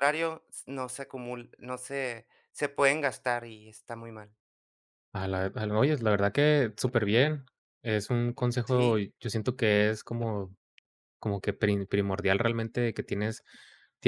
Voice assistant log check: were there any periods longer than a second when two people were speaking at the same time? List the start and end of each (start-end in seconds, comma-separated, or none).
none